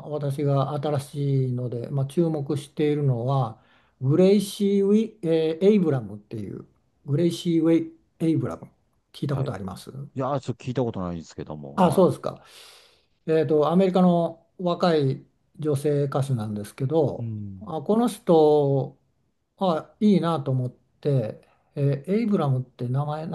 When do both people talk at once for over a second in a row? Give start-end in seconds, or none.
none